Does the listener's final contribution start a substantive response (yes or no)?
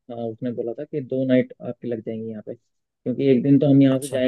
no